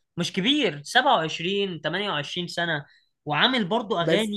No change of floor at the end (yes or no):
yes